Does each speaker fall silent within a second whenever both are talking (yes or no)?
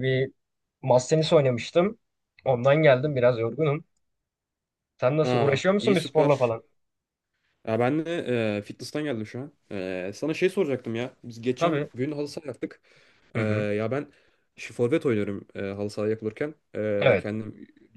no